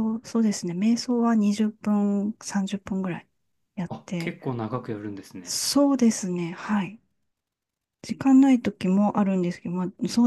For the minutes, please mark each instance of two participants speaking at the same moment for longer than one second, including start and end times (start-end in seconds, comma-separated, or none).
none